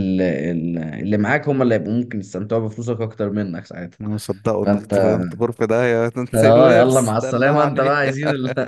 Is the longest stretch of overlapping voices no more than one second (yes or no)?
no